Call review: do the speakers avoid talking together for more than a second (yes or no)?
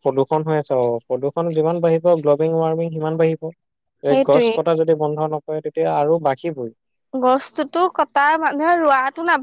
yes